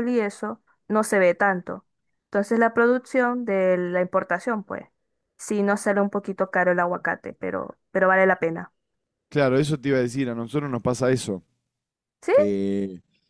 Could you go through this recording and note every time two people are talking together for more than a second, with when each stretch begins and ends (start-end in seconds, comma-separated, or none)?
none